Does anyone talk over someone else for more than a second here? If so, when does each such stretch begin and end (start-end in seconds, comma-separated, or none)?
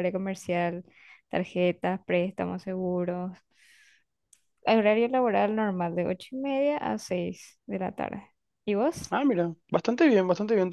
none